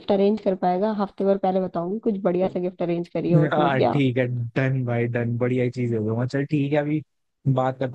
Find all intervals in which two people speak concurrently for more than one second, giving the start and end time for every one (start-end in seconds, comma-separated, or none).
none